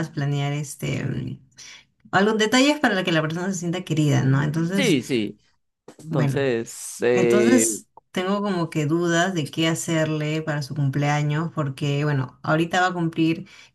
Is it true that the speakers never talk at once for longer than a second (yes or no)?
yes